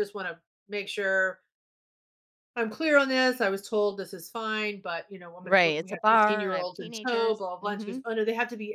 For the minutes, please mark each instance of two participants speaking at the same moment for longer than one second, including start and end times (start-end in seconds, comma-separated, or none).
5.4-8.0